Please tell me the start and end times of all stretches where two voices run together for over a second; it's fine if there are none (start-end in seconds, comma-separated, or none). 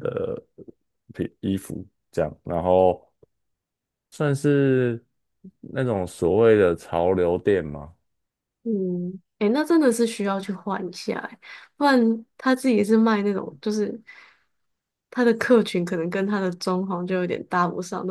none